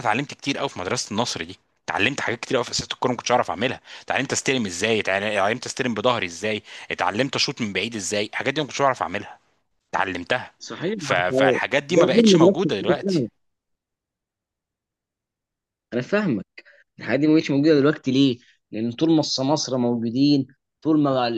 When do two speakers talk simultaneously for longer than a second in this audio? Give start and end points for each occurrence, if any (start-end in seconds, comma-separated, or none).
11.0-13.2